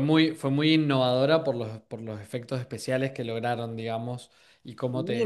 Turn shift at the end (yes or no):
yes